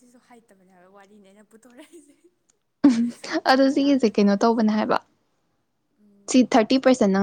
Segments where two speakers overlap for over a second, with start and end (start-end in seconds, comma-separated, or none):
3.5-4.8